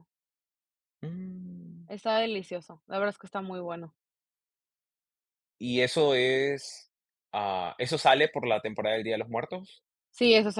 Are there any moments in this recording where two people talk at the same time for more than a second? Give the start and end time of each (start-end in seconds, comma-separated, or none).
none